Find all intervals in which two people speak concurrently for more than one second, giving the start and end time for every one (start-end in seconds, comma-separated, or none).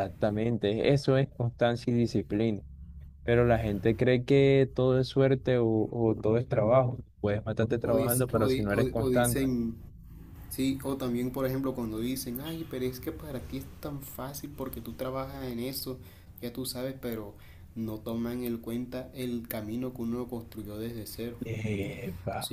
7.8-9.4